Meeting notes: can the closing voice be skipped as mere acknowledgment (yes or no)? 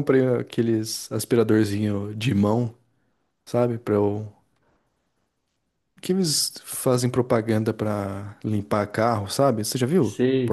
no